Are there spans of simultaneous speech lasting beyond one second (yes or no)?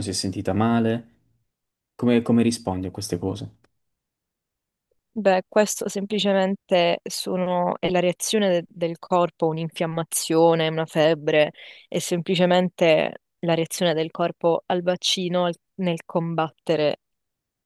no